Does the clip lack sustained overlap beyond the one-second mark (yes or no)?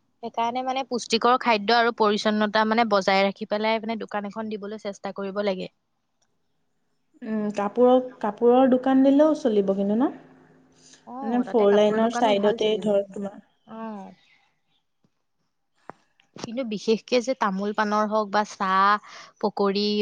no